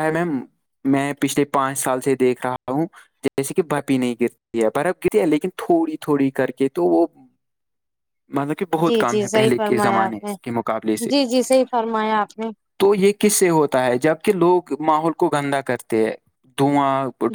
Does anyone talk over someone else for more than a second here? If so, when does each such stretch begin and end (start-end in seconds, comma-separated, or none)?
8.8-10.3